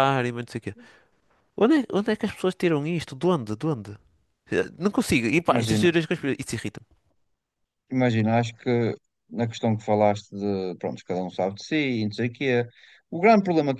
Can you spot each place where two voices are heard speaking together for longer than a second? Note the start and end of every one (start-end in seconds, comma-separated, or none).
none